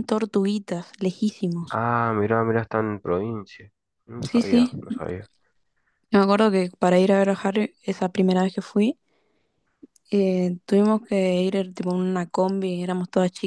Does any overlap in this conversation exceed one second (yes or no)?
no